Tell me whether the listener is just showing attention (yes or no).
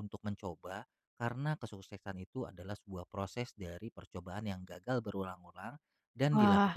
yes